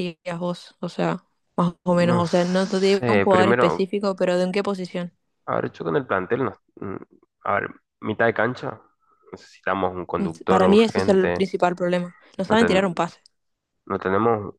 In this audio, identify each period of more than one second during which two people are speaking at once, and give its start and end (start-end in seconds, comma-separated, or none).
1.9-3.9, 10.2-11.5